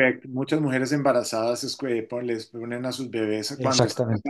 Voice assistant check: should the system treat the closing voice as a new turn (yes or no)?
no